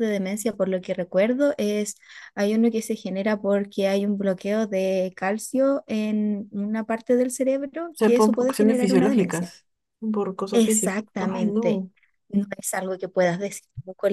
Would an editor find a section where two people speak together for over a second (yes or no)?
yes